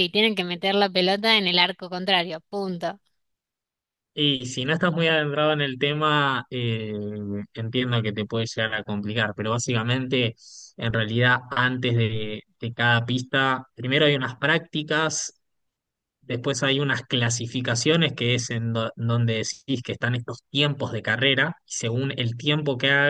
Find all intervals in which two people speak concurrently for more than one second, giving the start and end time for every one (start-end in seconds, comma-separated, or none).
none